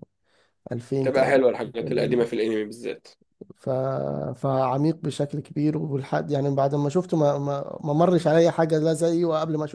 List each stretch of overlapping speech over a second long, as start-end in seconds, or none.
1.0-2.3